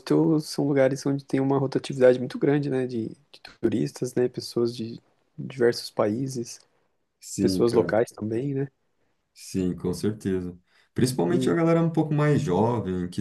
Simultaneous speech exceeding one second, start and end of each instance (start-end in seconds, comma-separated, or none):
none